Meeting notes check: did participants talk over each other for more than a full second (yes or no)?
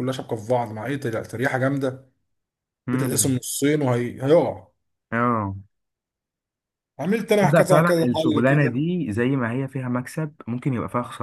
yes